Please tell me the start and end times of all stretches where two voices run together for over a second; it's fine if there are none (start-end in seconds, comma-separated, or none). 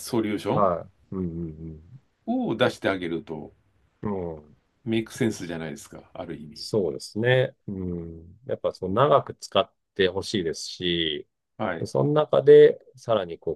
none